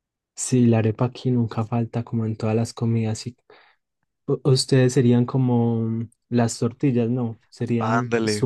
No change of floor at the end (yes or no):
no